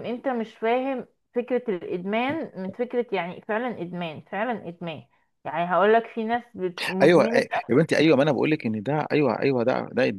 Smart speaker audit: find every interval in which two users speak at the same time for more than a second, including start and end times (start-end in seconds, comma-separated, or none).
none